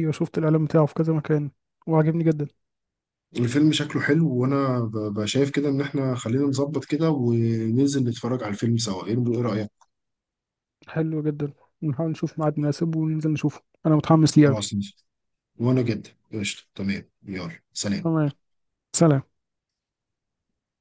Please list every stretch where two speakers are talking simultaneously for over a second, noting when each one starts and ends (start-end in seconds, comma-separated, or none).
none